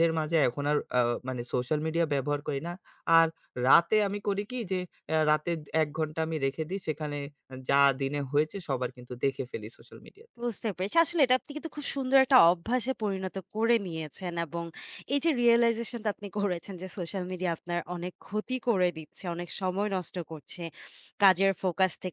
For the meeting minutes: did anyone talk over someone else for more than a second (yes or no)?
no